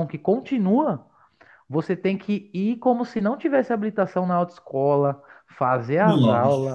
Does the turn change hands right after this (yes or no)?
no